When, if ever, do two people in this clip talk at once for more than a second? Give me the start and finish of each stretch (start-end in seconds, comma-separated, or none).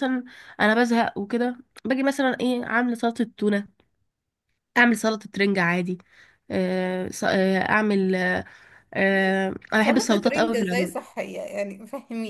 9.1-11.0